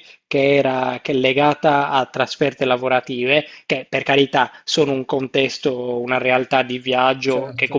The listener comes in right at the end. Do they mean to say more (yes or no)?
no